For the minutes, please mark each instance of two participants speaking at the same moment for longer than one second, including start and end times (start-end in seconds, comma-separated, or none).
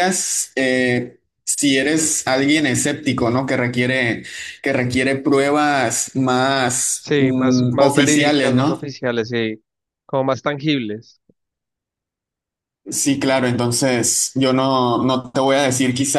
7.0-8.9